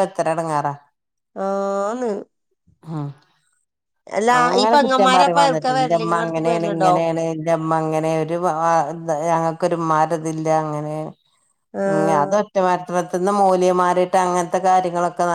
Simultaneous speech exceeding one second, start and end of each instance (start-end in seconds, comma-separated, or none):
4.7-6.9